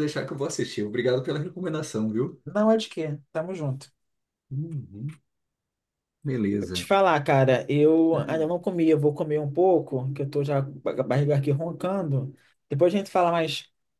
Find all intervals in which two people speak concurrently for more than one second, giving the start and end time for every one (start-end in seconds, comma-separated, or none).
none